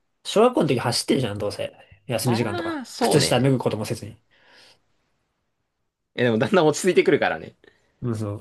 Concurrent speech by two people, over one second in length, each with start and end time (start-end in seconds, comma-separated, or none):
2.2-3.5